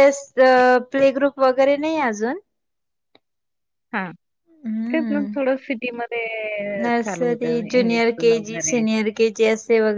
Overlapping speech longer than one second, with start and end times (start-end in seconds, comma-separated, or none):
6.8-8.8